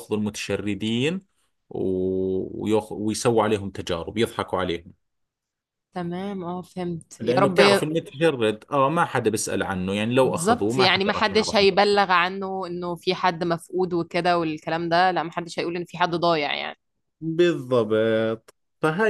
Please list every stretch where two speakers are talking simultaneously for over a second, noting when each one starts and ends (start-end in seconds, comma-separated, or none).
10.2-11.7